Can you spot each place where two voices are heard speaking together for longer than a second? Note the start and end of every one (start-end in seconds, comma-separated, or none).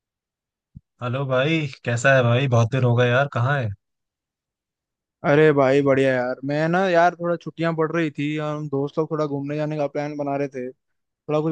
none